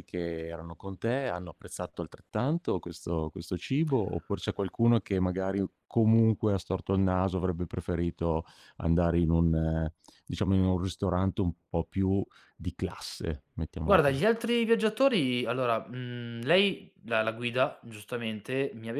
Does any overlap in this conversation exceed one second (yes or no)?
no